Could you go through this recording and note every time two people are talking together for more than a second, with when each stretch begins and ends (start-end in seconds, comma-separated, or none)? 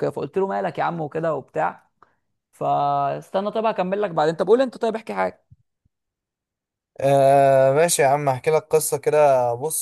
none